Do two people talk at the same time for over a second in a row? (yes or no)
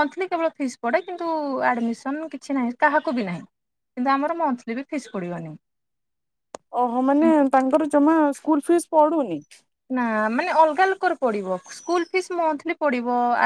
no